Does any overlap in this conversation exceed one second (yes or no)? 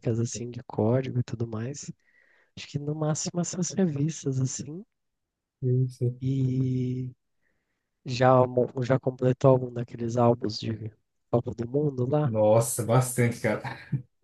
no